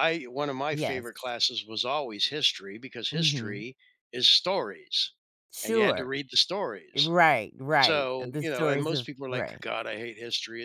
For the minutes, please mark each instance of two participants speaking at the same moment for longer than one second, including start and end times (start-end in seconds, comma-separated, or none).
7.8-9.6